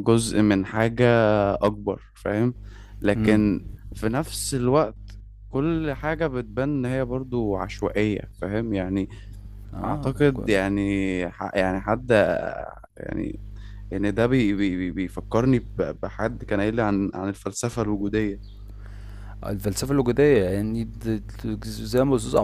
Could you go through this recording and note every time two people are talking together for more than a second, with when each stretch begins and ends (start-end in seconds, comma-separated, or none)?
none